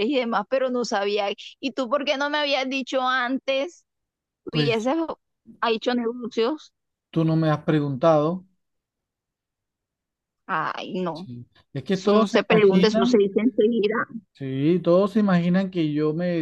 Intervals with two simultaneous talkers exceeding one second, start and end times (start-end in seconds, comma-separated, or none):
11.9-13.3